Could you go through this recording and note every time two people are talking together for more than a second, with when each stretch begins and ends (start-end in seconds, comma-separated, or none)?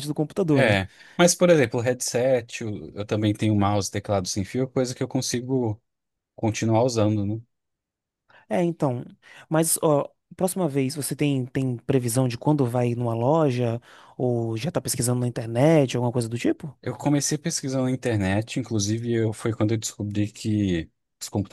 none